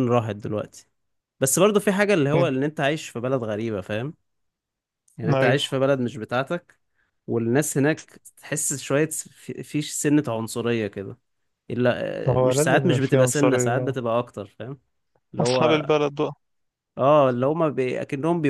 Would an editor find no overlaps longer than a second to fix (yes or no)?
no